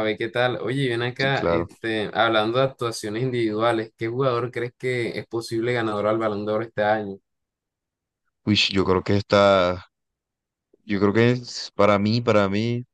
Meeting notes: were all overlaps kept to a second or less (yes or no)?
yes